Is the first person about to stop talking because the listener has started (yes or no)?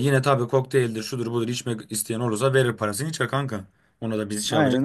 yes